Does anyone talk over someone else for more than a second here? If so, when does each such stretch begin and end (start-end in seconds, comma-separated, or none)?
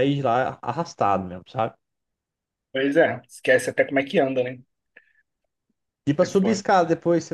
none